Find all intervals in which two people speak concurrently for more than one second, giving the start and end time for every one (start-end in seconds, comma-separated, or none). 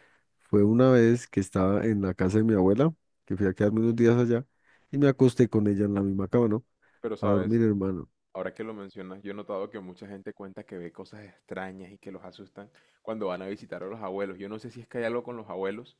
none